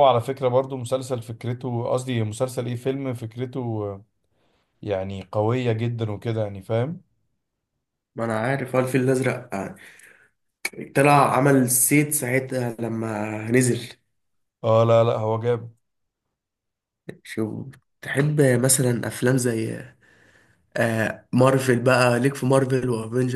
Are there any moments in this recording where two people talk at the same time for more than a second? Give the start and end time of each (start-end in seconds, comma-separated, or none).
none